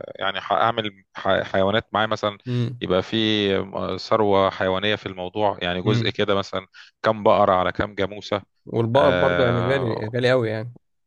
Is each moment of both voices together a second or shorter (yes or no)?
no